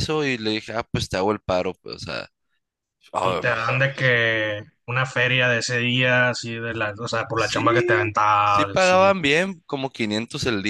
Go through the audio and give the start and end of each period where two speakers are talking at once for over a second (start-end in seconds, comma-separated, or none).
7.3-9.0